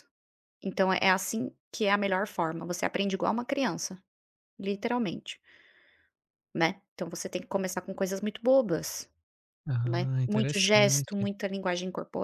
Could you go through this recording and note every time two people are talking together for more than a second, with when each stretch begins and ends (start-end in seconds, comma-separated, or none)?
9.8-11.3